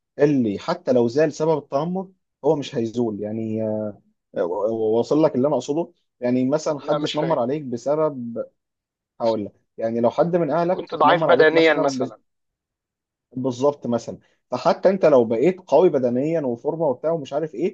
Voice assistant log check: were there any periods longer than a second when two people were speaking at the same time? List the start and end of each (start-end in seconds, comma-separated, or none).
10.5-12.1